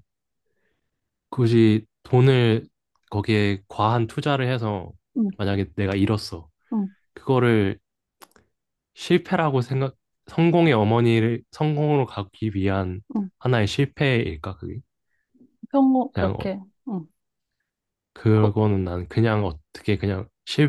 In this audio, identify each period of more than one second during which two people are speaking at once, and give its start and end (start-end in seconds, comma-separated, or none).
none